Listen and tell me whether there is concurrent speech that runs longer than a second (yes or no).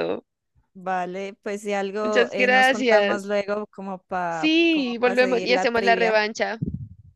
yes